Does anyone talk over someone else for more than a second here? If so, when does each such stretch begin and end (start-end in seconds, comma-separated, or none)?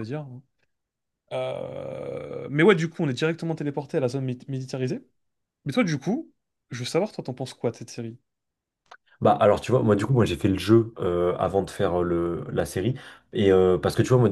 none